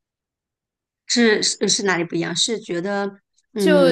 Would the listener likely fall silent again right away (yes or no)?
no